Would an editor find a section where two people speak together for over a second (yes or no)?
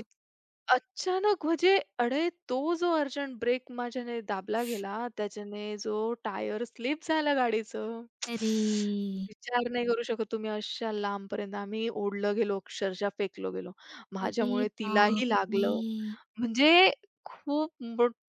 yes